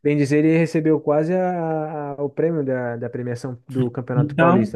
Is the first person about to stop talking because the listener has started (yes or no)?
yes